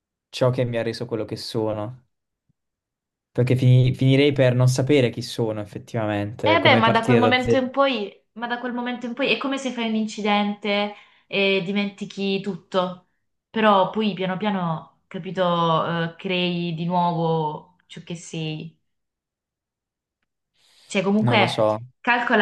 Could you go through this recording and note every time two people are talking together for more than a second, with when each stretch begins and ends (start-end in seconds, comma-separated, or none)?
6.4-7.7